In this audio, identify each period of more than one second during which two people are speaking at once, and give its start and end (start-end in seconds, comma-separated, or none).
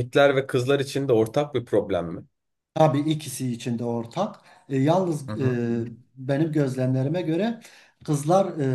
none